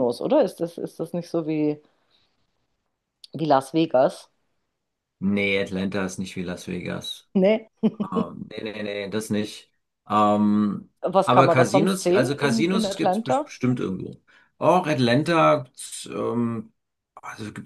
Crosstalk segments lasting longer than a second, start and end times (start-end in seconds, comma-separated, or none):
11.2-13.5